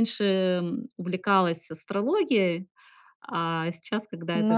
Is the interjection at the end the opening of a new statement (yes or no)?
yes